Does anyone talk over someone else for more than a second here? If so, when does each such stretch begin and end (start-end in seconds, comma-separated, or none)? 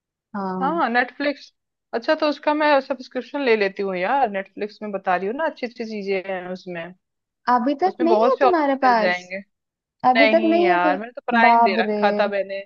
7.9-9.2, 10.2-12.0